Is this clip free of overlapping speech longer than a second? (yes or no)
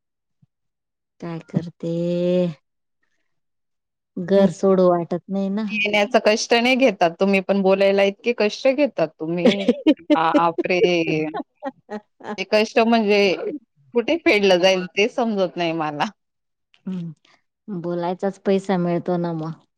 yes